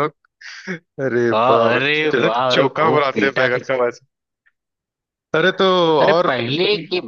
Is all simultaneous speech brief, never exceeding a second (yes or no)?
no